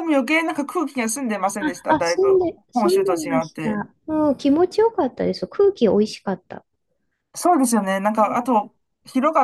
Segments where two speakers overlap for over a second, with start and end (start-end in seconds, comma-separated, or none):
1.9-3.8